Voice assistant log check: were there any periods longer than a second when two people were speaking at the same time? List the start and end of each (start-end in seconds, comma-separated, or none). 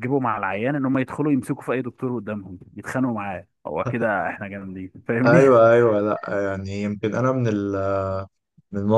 none